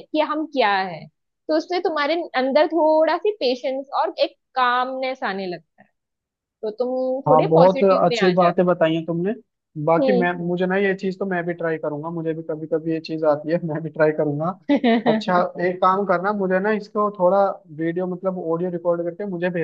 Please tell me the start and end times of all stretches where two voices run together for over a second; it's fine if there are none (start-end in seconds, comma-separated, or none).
7.3-8.7